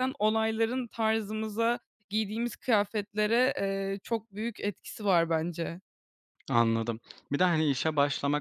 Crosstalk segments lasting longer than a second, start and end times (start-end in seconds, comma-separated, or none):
none